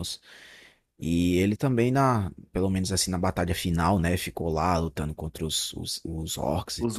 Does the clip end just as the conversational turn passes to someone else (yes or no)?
yes